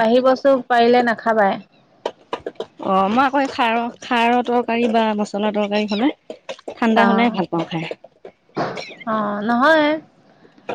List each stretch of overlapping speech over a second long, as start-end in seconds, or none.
none